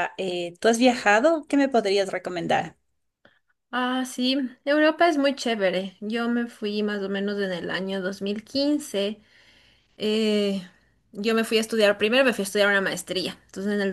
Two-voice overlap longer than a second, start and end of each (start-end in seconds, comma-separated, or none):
none